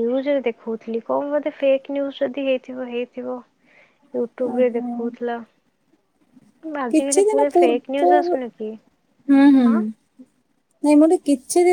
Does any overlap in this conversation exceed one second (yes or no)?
yes